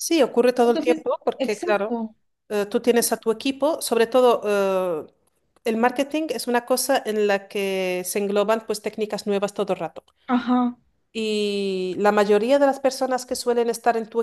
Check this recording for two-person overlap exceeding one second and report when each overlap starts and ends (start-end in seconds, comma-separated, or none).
0.6-2.0